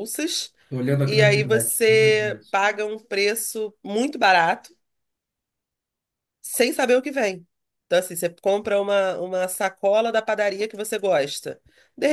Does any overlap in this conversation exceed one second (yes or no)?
yes